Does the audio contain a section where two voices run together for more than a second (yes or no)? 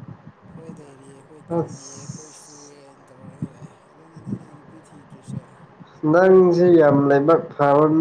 yes